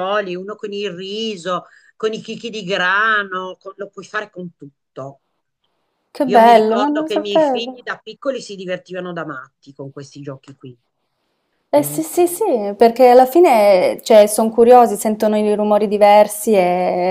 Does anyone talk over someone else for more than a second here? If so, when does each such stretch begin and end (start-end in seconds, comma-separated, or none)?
6.2-7.9